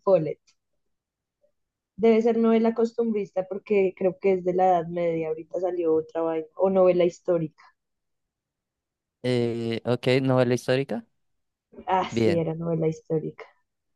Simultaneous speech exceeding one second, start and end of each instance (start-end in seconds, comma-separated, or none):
none